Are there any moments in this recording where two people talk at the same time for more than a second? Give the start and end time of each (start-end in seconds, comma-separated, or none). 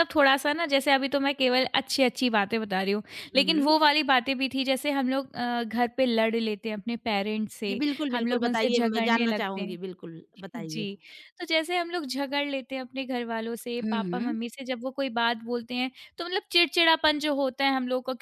7.7-9.8